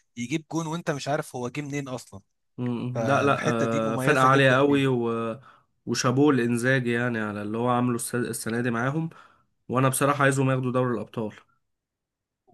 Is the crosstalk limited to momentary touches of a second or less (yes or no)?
no